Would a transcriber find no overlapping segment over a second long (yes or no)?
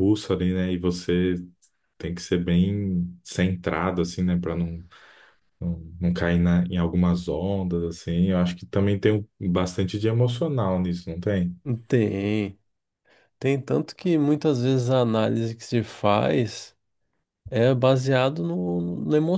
yes